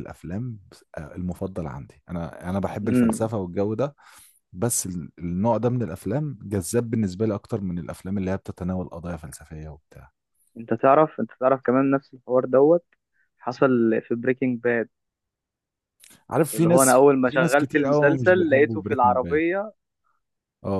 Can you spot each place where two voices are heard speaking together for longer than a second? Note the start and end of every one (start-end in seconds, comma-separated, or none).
16.5-19.4